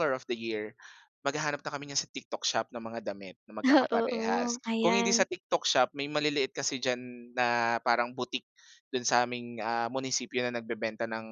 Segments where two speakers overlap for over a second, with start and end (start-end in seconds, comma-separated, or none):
3.6-5.3